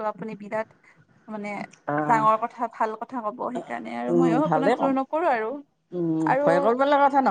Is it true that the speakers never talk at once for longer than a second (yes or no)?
yes